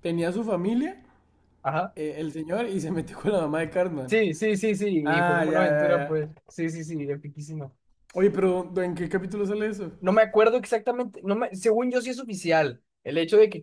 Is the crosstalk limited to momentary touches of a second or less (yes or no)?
no